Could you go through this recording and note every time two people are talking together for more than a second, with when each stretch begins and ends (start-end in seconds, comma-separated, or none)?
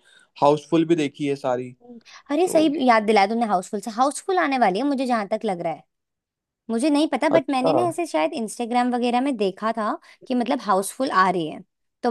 none